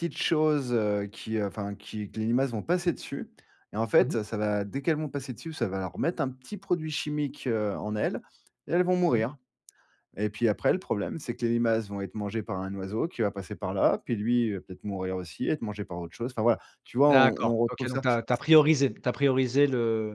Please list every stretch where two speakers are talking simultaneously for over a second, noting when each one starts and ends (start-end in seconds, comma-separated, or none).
17.1-18.4